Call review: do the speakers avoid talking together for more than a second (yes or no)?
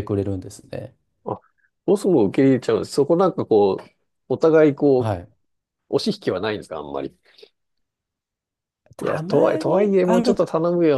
no